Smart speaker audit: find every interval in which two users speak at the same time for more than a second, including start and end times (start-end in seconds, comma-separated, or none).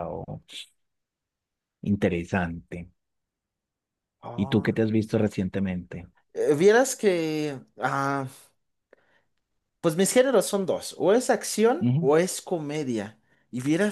none